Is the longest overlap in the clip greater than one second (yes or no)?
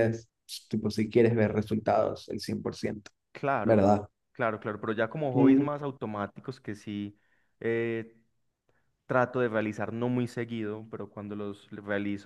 no